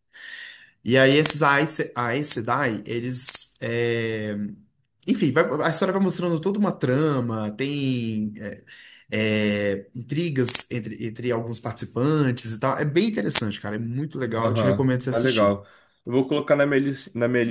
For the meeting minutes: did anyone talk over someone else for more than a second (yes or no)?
yes